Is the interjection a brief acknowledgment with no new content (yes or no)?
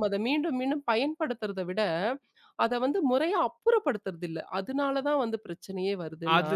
no